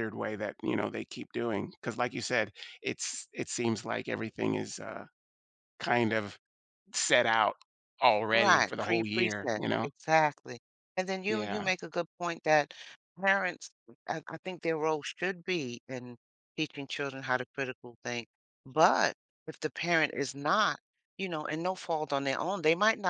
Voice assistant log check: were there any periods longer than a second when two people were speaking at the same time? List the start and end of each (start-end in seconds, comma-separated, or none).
8.3-9.9